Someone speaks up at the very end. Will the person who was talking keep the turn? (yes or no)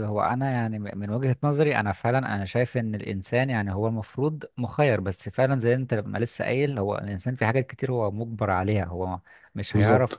yes